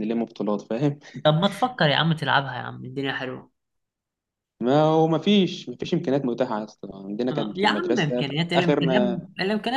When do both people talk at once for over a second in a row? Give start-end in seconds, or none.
7.3-9.0